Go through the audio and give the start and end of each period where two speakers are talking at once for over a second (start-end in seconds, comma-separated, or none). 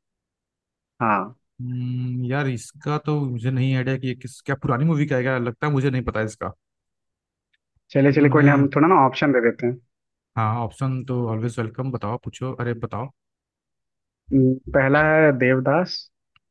none